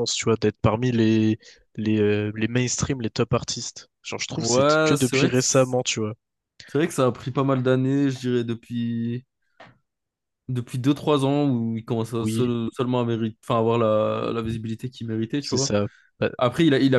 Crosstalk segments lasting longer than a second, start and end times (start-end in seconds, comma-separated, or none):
4.3-6.1